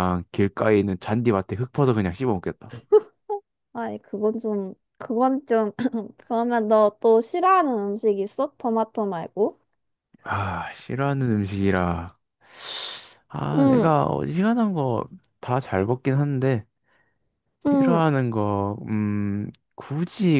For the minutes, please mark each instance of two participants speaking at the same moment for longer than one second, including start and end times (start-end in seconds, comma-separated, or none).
none